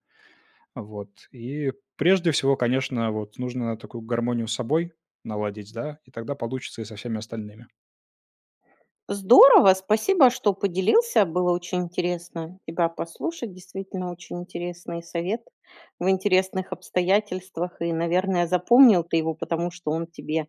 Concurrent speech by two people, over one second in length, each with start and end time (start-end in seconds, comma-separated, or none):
none